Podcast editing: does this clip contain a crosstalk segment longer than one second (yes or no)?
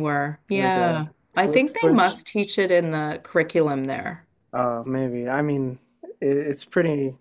yes